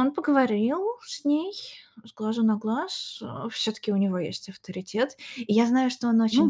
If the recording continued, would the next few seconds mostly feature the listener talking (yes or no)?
no